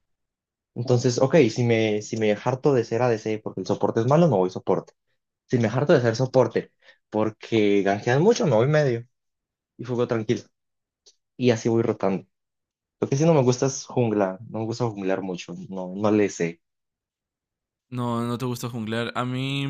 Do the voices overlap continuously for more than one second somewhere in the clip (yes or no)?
no